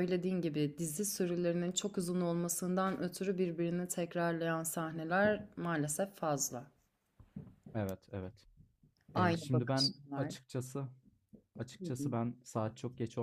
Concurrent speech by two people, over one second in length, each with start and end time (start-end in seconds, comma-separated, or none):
9.1-10.3